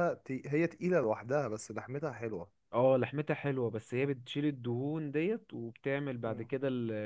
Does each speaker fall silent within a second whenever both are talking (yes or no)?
yes